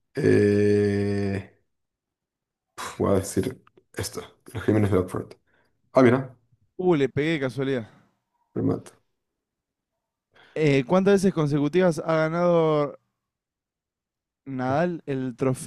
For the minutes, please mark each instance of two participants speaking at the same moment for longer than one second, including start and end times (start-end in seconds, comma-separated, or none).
none